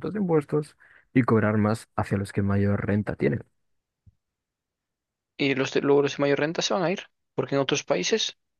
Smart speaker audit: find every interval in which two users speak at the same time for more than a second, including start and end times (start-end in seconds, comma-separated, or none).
none